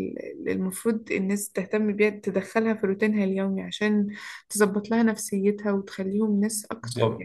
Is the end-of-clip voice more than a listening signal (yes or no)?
no